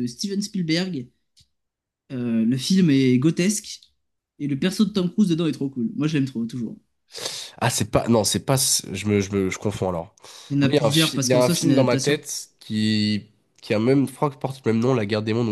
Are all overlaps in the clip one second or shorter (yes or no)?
no